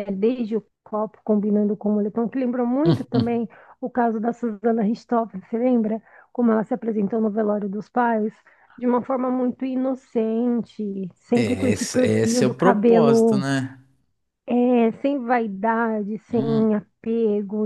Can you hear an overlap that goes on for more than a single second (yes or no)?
yes